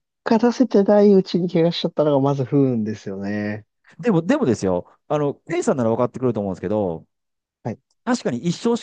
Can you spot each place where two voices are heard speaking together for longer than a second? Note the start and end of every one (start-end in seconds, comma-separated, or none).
none